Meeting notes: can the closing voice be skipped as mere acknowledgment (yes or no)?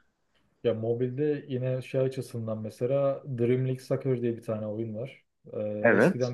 yes